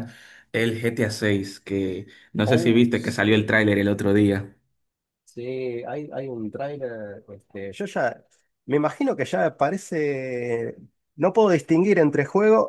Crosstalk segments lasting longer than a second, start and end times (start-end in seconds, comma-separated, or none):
2.5-3.7